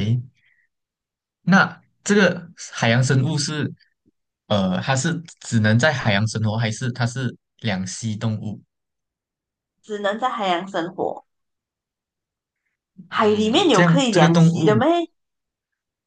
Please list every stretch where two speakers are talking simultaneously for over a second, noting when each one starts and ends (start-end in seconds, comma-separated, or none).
13.2-14.8